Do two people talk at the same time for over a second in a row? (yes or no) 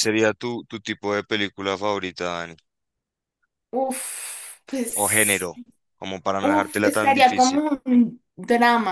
yes